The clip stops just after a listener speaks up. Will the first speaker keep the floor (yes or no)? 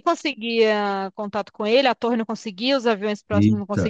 yes